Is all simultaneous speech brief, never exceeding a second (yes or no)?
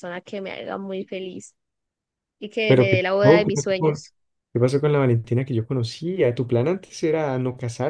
no